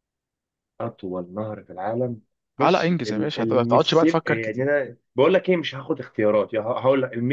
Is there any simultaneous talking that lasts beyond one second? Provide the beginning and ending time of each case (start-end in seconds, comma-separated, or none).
2.6-4.6